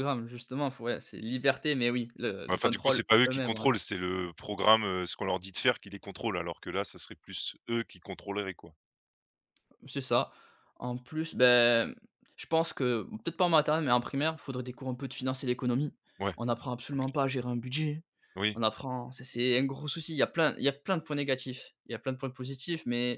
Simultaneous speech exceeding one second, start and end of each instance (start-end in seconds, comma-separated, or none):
2.5-3.7